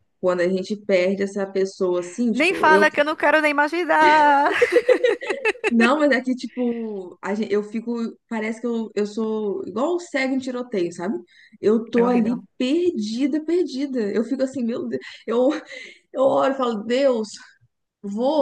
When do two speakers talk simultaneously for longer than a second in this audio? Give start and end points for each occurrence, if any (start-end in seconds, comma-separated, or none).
none